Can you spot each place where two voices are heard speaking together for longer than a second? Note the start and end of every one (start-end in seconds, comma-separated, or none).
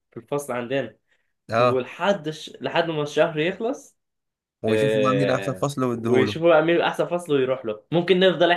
4.7-6.4